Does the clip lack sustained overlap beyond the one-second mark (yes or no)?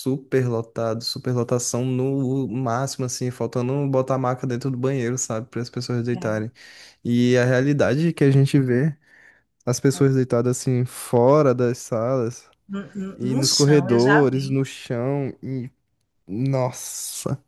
no